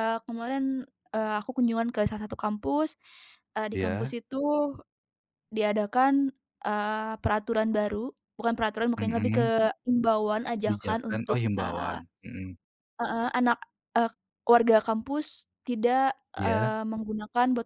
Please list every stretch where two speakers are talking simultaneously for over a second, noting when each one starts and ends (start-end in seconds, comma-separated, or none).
10.6-12.0